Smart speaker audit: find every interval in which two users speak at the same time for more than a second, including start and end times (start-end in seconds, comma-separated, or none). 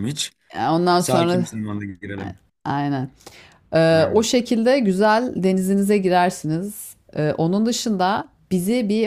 none